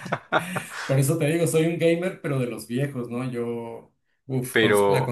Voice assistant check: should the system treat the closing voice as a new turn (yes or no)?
no